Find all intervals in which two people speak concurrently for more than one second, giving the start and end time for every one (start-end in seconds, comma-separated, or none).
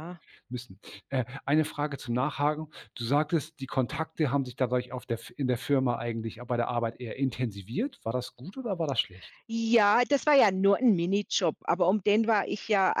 none